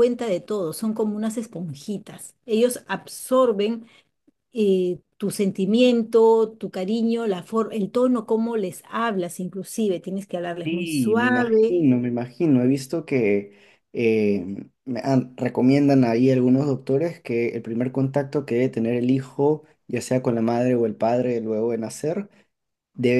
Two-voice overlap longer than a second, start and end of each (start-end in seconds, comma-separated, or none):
10.6-11.8